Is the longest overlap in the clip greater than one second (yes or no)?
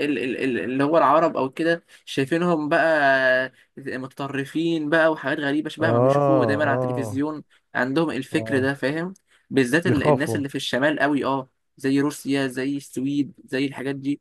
yes